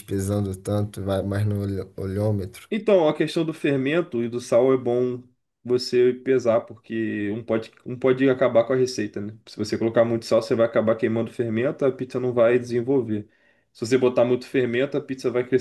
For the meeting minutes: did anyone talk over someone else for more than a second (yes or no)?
no